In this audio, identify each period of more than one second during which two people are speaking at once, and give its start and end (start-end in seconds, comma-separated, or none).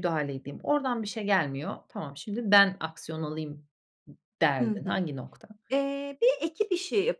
none